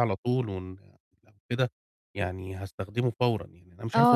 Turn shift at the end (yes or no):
yes